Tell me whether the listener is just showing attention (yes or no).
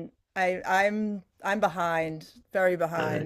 no